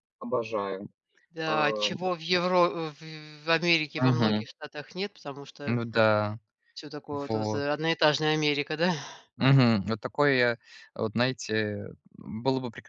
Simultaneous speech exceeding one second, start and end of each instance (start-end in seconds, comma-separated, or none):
none